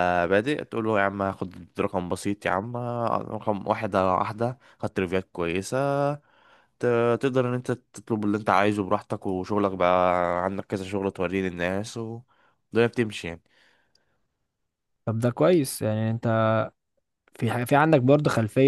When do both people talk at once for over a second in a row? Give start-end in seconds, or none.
none